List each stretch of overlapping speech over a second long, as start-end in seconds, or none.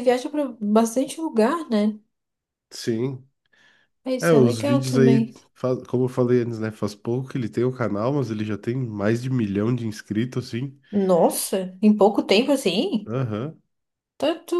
4.2-5.4